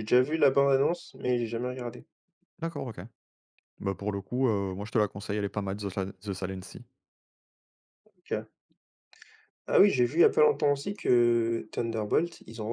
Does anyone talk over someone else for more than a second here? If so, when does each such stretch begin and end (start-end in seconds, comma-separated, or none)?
none